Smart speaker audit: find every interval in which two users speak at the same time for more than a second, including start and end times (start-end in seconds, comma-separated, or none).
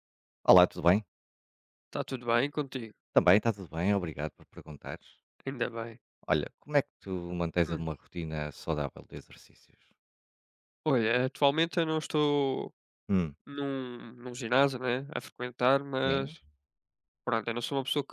none